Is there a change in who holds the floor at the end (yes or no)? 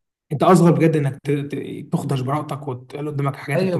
yes